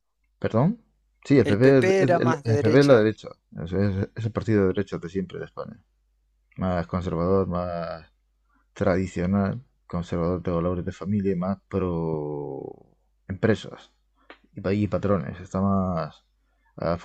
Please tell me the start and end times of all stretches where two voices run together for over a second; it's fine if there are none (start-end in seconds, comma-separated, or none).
1.4-3.1